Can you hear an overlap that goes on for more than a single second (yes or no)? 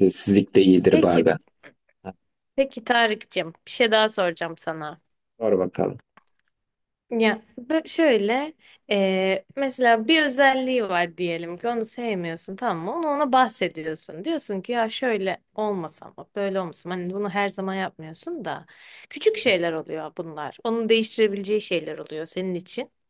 no